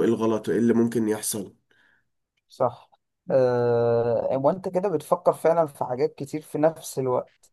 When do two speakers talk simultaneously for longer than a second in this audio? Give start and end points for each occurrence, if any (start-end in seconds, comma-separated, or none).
none